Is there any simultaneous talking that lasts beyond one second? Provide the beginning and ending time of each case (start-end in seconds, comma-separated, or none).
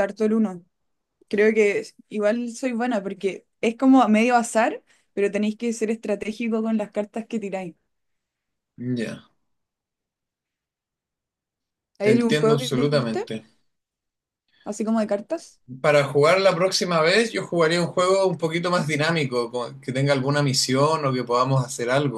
12.0-13.3